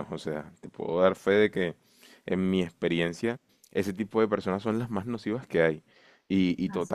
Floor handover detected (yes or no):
no